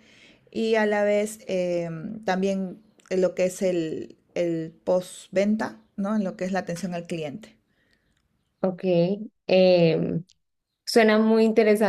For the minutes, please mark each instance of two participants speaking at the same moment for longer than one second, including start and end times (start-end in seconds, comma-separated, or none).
none